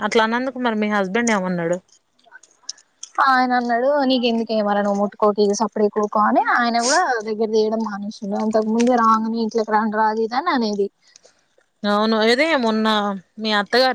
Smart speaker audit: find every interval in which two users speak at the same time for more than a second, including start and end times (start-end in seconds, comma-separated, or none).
none